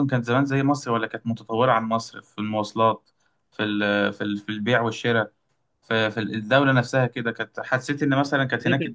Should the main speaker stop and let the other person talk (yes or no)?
no